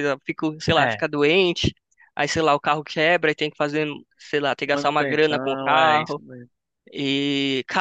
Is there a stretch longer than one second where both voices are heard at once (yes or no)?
yes